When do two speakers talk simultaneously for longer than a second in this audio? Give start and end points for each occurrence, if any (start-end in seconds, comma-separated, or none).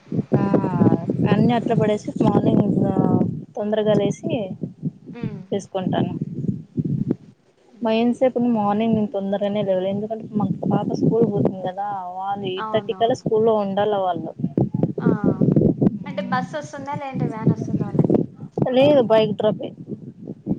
none